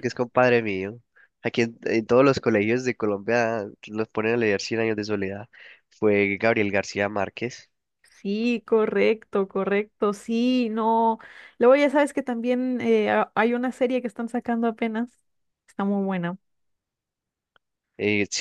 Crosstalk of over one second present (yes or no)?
no